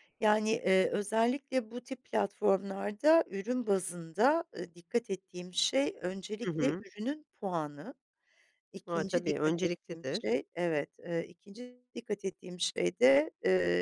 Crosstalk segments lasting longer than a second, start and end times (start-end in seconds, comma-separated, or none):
8.9-10.3